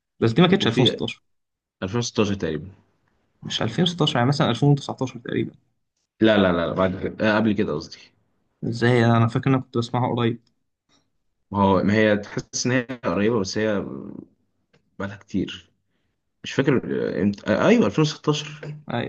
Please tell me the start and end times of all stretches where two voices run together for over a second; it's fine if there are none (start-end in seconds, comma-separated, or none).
none